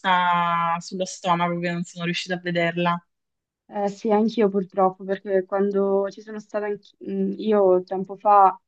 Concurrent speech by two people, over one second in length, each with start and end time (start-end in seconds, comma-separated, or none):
none